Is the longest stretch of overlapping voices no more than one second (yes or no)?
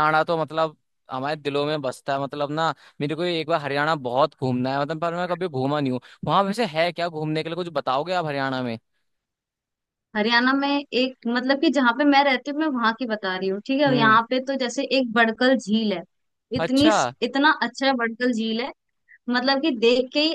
yes